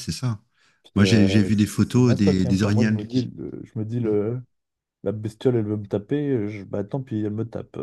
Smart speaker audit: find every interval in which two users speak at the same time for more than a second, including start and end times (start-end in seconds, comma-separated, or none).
0.9-3.3